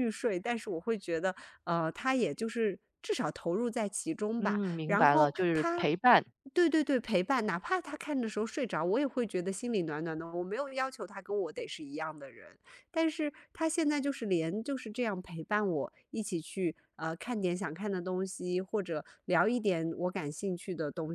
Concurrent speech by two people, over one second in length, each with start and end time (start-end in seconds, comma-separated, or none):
4.4-5.9